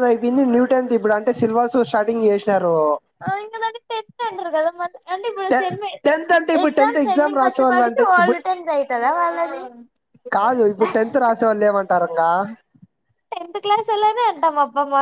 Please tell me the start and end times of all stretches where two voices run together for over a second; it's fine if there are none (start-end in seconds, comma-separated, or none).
6.6-8.4